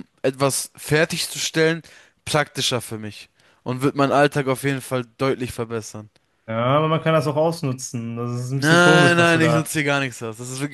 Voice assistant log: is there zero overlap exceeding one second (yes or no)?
no